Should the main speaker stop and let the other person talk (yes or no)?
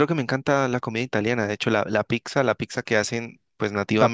yes